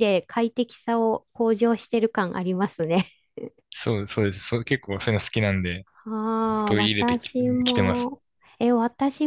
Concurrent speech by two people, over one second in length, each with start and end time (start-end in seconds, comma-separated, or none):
6.7-8.1